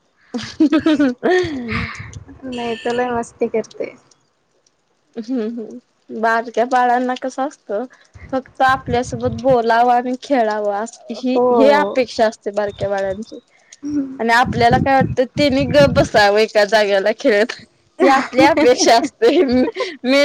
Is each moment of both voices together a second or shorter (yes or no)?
yes